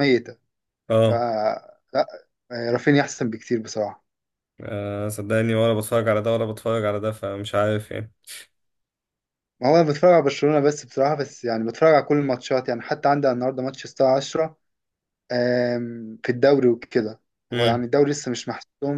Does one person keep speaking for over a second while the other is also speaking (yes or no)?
no